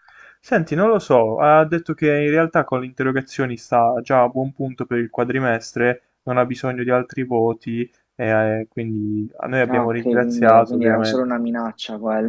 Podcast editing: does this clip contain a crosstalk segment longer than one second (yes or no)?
yes